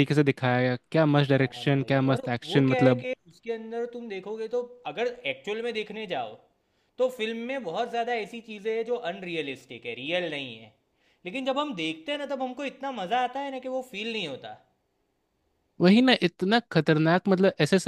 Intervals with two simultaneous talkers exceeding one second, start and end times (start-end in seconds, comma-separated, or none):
1.3-3.0